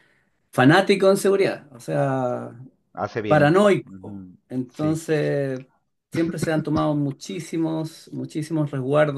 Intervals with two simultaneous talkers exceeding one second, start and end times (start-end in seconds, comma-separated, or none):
3.3-5.0